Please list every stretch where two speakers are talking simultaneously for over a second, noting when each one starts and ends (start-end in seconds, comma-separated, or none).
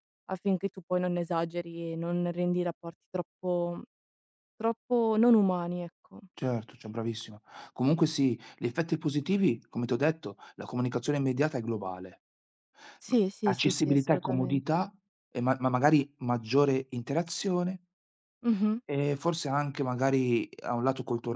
13.1-14.9